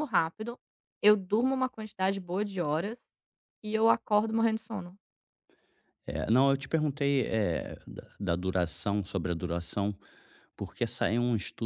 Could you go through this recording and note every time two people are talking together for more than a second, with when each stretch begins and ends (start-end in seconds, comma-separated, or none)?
none